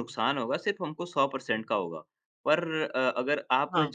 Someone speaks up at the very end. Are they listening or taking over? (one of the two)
listening